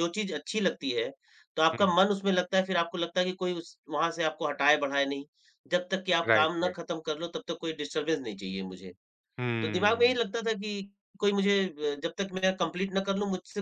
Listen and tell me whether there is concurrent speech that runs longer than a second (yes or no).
no